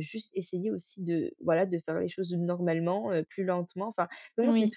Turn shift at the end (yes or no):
yes